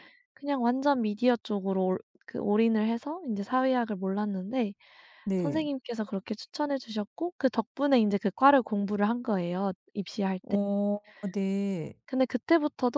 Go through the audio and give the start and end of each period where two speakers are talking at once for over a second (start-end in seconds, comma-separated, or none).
none